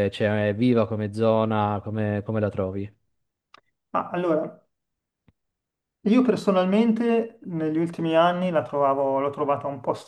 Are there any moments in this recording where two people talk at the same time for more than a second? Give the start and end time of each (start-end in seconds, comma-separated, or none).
none